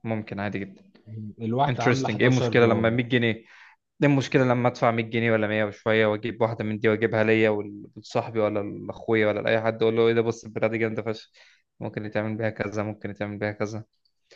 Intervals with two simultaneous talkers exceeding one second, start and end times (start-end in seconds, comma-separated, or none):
1.7-3.0